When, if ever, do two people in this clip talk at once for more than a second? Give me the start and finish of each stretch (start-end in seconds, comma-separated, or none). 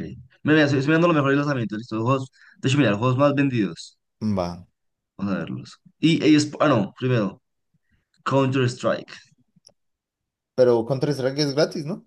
none